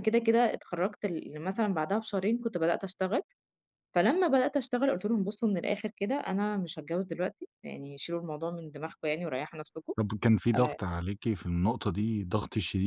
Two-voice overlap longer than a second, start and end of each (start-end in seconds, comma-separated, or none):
none